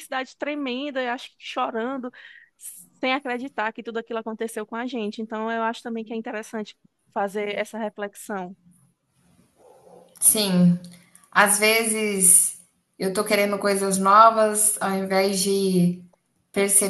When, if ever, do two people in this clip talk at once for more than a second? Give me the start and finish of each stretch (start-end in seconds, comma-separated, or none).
none